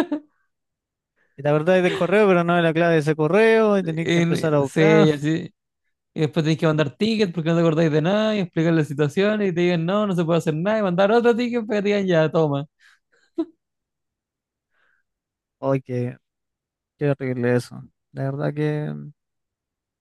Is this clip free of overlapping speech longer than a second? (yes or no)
no